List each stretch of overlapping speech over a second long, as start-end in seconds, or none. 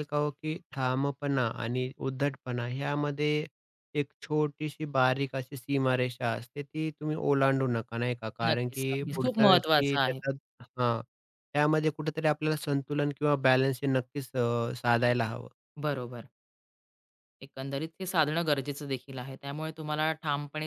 8.5-10.2